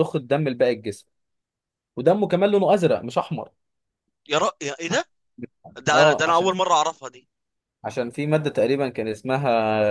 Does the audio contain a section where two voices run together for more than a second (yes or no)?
no